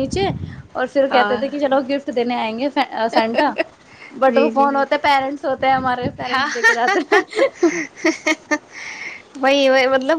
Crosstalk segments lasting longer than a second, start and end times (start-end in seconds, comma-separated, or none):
none